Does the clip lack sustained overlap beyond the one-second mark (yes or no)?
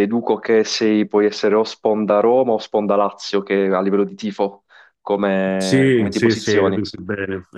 no